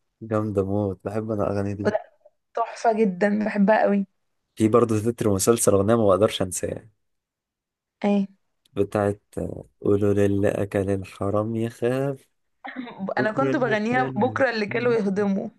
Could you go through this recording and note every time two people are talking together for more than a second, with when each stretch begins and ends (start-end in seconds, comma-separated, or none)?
13.2-14.4